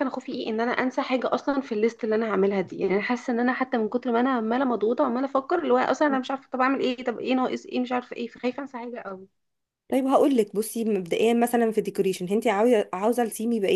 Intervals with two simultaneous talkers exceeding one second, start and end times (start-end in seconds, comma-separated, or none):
none